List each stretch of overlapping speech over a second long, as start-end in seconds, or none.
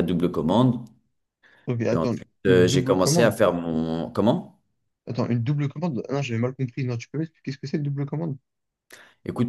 1.9-3.4